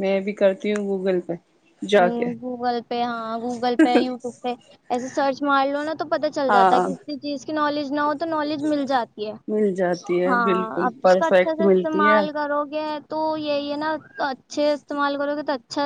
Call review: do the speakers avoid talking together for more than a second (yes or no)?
no